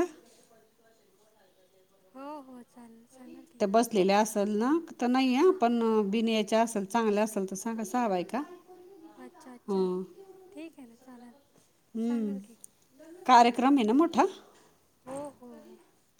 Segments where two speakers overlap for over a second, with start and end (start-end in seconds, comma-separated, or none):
none